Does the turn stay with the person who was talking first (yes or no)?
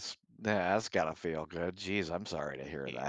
no